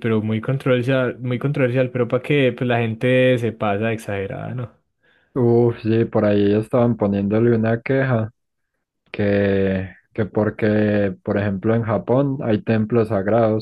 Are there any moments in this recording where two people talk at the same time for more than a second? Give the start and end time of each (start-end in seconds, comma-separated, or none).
none